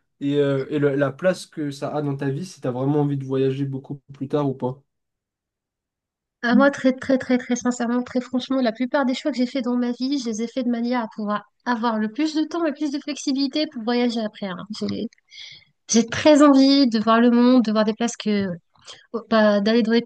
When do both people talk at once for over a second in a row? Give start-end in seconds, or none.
none